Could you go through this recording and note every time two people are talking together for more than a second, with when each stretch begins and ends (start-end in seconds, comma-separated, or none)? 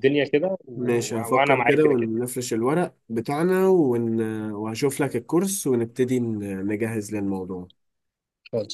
0.7-2.1